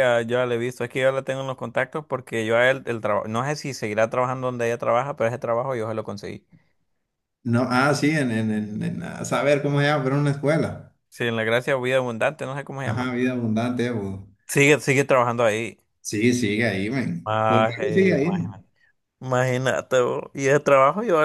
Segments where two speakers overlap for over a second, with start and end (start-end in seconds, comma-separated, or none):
17.2-18.6